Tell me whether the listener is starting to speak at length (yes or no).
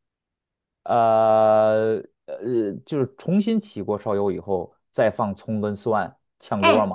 yes